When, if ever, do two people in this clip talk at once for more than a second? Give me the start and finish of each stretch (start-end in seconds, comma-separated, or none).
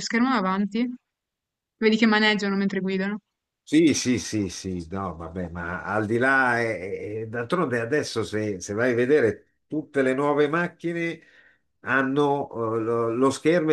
none